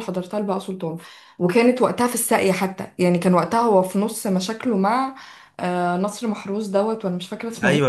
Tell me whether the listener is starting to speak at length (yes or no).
yes